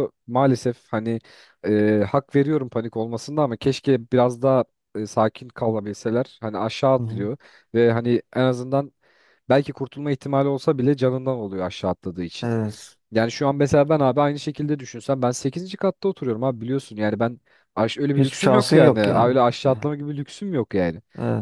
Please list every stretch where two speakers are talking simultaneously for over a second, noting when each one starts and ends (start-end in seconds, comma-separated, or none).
18.2-19.9